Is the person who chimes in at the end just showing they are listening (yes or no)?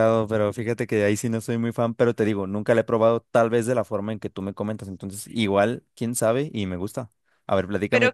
no